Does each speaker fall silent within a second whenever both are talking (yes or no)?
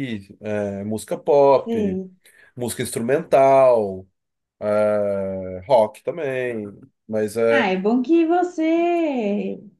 yes